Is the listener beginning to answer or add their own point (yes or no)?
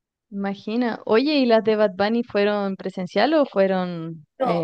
yes